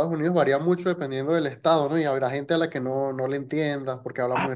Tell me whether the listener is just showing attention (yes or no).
no